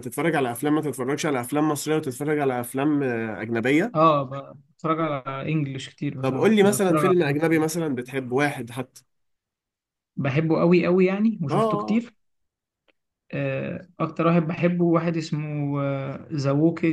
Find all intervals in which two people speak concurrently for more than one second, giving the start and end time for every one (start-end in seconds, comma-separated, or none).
6.2-7.6